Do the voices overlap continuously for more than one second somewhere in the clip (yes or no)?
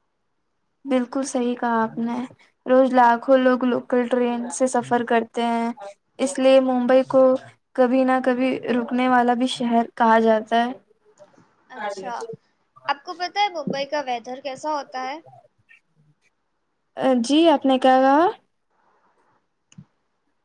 no